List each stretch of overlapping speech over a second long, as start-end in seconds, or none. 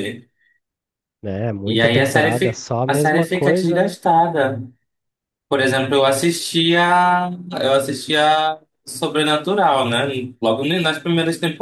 1.6-4.0